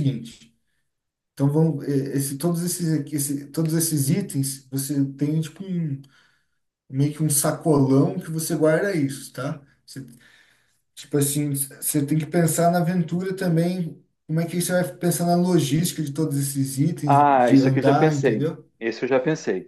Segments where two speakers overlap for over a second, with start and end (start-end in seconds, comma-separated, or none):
17.0-18.7